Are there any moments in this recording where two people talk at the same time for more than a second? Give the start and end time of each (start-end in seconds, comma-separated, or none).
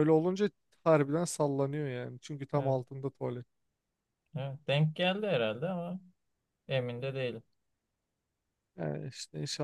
none